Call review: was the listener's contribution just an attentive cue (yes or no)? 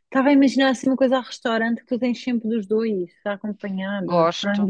no